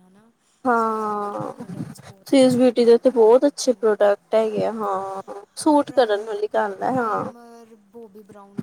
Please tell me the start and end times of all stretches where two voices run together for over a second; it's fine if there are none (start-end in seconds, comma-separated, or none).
2.4-4.0